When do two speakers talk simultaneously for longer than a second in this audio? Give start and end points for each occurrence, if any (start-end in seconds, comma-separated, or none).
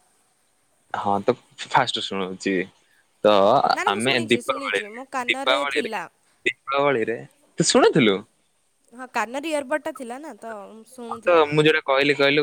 3.9-5.9